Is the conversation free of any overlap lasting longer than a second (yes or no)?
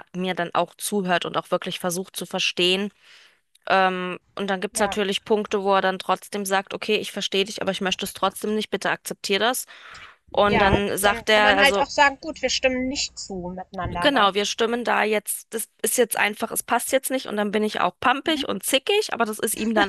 no